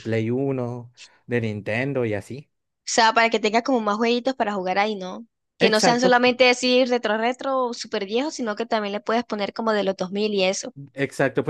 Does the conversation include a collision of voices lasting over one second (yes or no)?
no